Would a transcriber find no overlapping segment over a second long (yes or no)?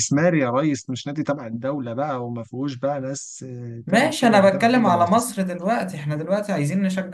no